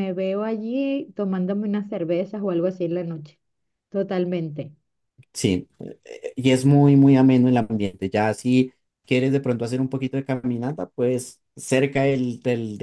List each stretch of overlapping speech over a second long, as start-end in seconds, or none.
none